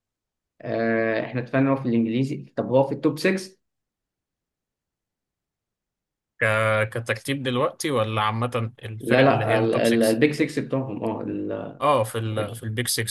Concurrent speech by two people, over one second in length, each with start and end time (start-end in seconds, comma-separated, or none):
9.0-10.2